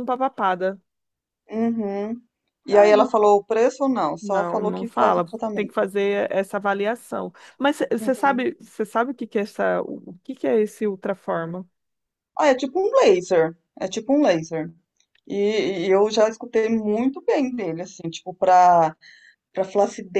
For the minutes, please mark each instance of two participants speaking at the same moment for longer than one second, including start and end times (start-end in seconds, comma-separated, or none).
4.2-5.7